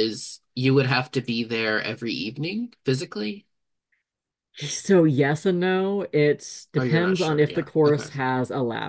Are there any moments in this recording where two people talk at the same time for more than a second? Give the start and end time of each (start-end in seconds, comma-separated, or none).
6.8-8.1